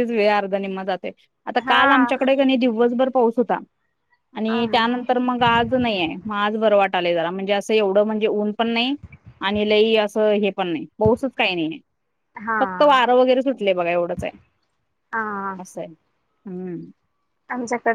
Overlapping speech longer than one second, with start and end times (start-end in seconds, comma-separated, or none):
none